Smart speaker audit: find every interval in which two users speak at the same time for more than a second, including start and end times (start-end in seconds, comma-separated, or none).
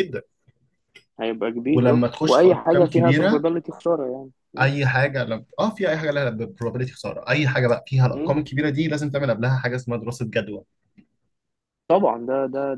1.7-3.4